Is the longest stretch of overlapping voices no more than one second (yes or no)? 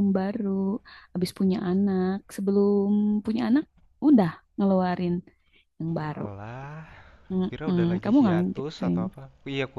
no